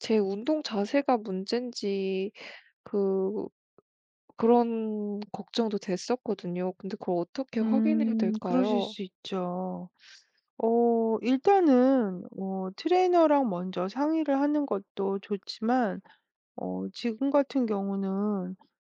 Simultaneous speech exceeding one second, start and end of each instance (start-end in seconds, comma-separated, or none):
7.6-8.9